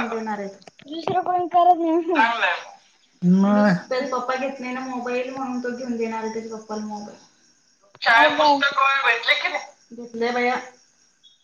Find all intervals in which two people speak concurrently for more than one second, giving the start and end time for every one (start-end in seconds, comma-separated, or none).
none